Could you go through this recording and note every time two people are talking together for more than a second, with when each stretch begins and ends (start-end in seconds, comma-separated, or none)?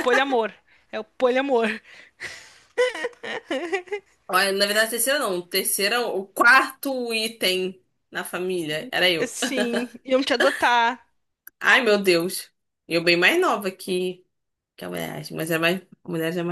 none